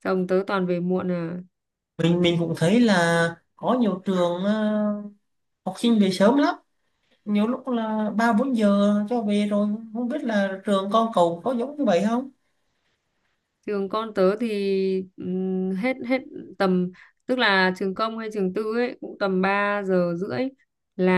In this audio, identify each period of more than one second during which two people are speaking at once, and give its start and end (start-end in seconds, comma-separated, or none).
none